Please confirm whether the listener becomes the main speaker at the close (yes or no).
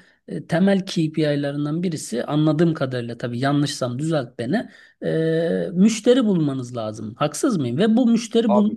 no